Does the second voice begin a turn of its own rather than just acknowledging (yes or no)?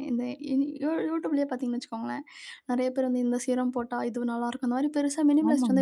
yes